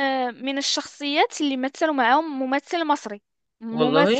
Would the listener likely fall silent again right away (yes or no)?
yes